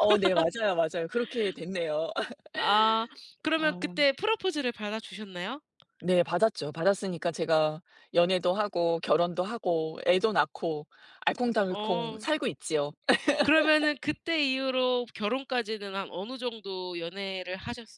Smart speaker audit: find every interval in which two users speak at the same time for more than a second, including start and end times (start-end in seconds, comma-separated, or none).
none